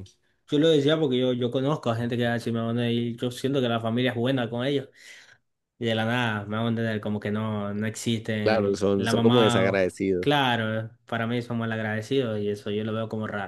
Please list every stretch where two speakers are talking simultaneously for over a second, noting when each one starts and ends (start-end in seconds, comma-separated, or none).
8.4-10.3